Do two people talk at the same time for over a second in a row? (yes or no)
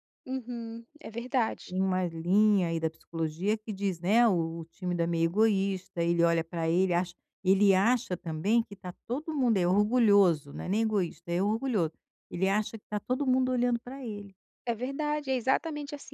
no